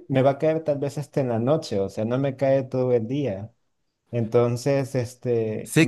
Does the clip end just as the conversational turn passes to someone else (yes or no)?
yes